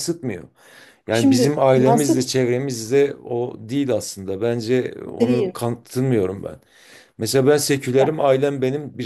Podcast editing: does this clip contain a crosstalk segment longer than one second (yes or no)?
yes